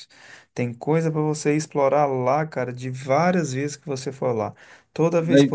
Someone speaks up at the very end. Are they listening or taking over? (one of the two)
listening